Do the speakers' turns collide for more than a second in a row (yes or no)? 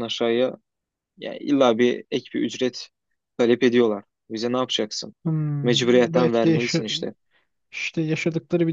yes